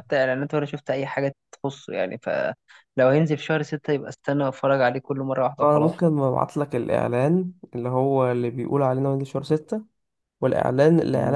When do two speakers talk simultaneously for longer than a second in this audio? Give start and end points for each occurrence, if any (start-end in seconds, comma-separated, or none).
none